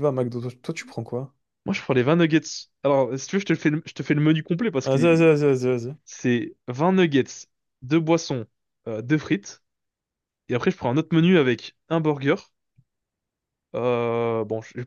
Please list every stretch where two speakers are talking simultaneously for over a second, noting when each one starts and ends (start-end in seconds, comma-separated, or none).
none